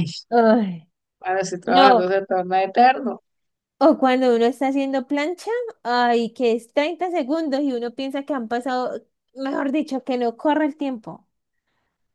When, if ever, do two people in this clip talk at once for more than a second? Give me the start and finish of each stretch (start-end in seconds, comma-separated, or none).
none